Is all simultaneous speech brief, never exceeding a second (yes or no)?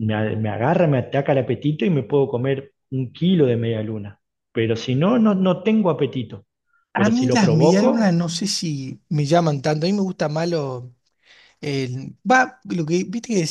no